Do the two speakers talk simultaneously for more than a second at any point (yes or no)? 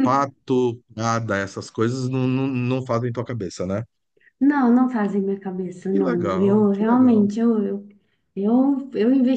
yes